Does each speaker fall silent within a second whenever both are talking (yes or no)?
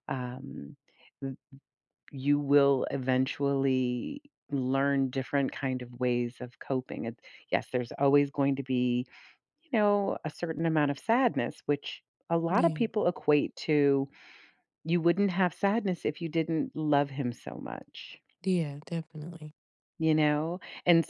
yes